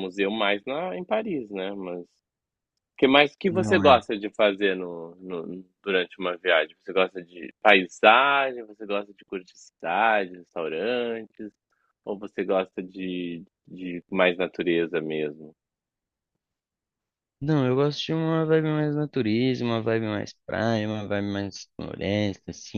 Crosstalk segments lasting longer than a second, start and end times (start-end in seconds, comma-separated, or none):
none